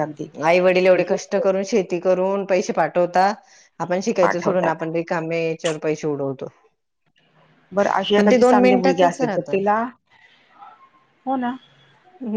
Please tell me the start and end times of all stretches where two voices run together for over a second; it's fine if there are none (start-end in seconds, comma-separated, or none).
8.2-9.6